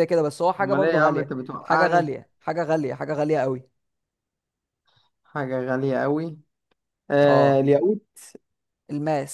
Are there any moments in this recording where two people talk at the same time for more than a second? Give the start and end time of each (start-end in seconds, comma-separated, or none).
0.6-2.1